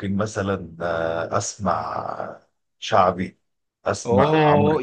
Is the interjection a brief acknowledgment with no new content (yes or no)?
no